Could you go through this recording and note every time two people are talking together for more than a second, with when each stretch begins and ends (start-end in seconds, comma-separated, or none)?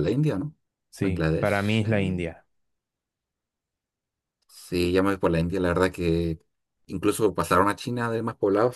1.0-2.2